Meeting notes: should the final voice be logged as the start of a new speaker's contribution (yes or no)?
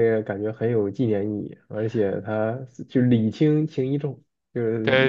yes